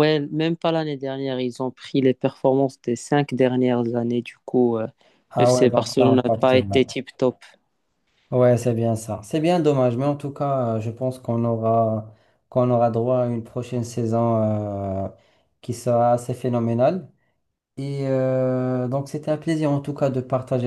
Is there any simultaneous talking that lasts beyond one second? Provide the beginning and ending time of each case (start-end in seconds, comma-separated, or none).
5.4-6.8